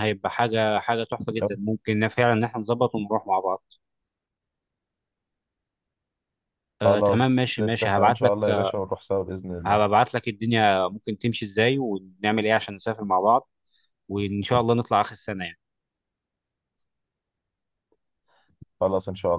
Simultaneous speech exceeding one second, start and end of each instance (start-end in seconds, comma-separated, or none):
6.8-8.3